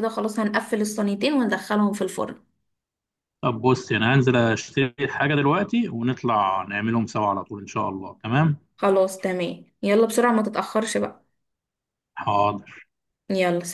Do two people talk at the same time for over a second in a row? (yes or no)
no